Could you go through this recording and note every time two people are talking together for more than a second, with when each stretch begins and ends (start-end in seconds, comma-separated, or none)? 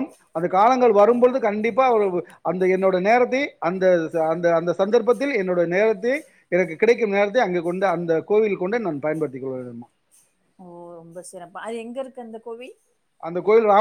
none